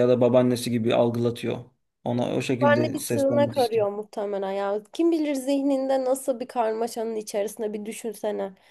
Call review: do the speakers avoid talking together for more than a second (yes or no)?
no